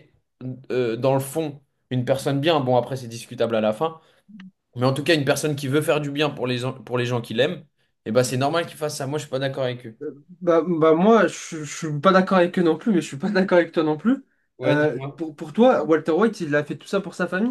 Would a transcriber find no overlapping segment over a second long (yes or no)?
yes